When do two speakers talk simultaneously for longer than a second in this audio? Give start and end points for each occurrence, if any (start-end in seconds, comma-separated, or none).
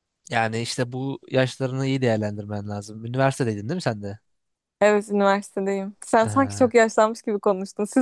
none